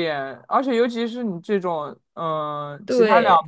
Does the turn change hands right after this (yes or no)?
no